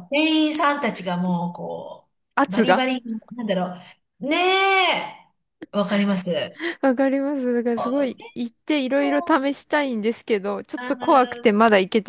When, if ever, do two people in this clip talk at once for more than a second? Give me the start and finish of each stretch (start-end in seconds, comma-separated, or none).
none